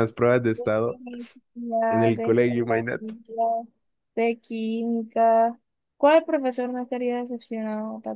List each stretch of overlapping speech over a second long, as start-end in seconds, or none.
1.9-3.1